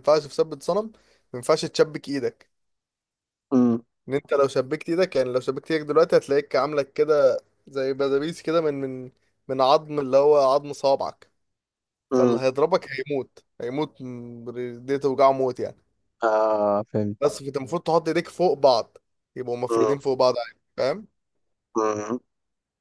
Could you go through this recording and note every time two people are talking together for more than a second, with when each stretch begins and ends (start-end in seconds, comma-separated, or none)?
none